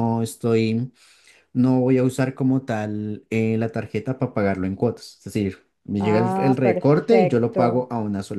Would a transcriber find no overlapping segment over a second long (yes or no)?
no